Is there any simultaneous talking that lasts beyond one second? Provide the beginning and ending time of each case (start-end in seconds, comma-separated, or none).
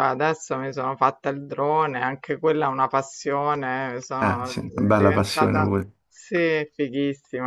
4.2-5.7